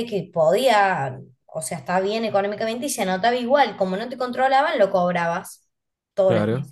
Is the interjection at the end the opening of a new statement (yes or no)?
no